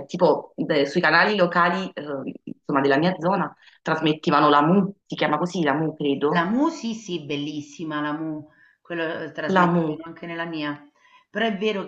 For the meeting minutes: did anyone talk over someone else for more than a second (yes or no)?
no